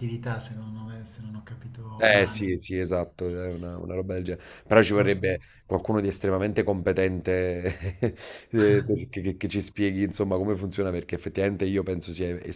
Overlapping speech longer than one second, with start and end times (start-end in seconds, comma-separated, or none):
none